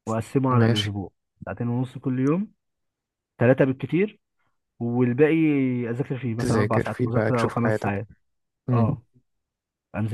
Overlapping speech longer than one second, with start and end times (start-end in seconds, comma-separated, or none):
6.4-8.0